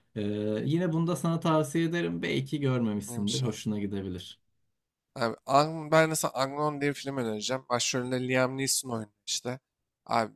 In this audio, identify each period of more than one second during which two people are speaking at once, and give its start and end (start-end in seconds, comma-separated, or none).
none